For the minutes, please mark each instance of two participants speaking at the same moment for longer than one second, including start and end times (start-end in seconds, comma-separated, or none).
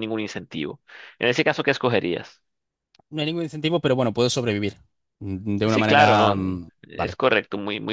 5.7-7.2